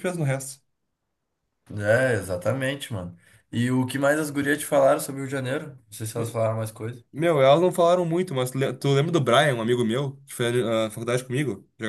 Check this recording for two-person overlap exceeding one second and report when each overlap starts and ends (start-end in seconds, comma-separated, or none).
none